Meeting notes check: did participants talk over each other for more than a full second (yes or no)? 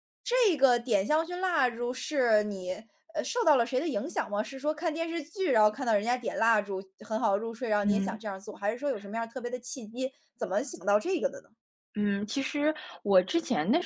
no